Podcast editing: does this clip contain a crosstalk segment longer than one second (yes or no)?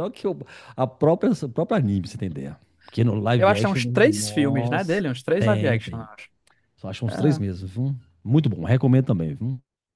yes